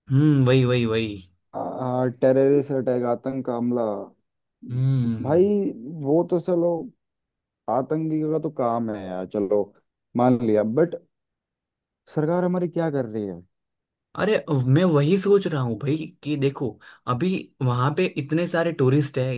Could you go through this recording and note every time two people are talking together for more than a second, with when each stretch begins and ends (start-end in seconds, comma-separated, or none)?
none